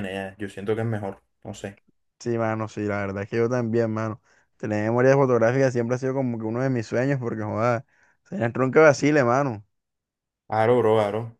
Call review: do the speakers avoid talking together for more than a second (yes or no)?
yes